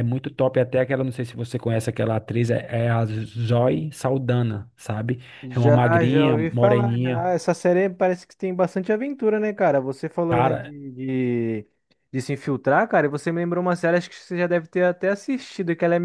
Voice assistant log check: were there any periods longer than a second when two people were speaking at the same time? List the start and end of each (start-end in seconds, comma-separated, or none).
5.5-7.3